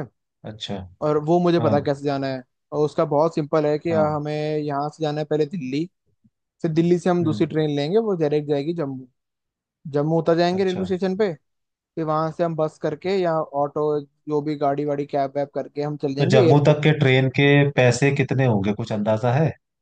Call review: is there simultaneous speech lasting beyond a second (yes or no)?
no